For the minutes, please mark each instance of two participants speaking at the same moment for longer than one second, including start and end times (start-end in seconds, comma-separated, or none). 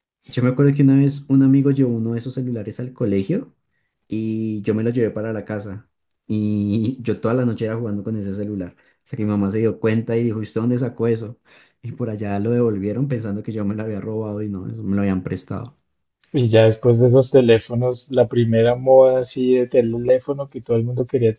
none